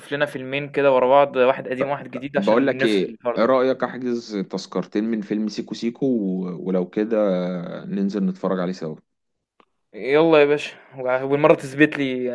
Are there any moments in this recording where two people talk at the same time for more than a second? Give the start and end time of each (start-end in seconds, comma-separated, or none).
2.4-3.7